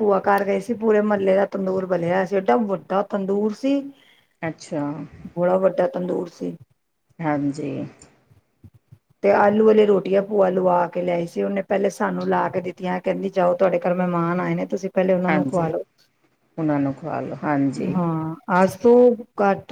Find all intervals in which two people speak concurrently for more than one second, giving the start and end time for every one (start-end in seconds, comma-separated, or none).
none